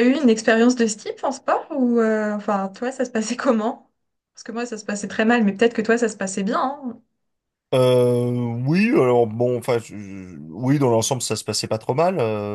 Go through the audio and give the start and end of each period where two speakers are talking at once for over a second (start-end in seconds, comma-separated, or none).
none